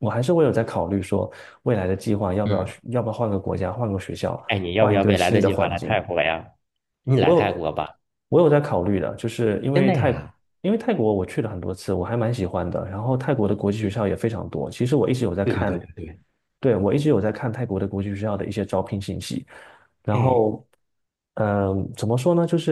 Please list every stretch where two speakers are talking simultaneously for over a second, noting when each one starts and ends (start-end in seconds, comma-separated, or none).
4.8-6.0